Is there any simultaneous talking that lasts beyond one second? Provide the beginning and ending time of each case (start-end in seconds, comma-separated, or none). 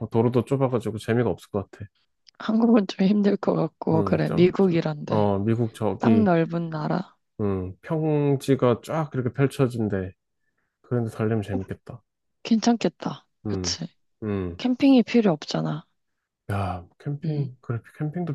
3.9-5.3